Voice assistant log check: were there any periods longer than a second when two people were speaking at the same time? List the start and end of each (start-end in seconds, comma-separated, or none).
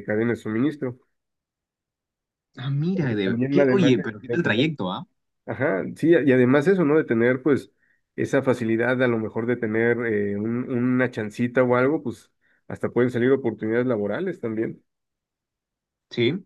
3.2-4.7